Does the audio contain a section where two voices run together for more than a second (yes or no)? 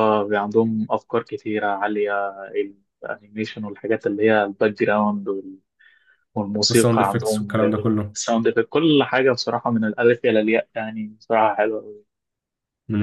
yes